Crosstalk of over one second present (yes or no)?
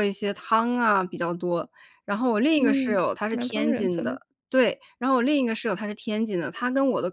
yes